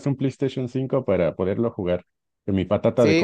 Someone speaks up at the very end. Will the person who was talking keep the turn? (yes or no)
no